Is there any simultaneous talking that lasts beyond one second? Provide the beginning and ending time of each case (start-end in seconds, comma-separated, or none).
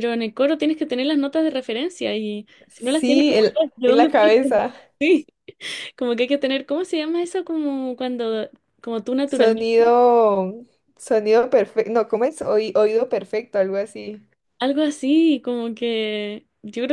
2.7-4.1